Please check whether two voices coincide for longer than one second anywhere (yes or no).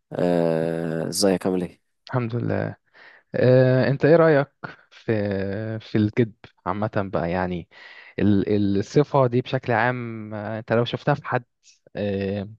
no